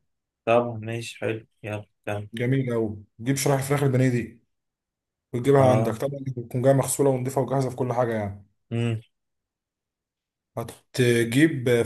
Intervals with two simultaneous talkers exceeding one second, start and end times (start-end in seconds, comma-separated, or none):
none